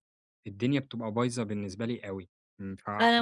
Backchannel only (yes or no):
no